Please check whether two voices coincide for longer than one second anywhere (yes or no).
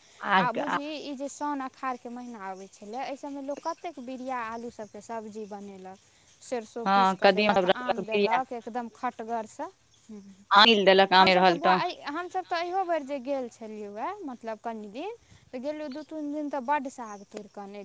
yes